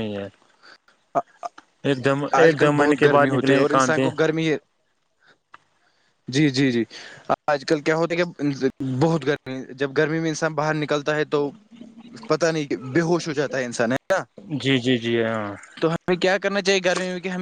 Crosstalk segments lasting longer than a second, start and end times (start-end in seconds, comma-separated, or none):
2.4-4.0